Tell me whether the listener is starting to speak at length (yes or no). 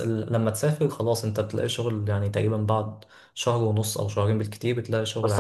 yes